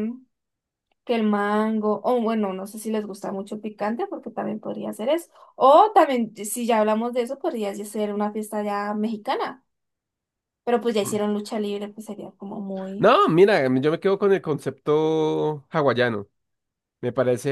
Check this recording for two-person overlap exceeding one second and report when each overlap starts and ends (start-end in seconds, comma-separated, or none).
none